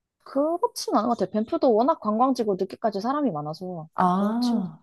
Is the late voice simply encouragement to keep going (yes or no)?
no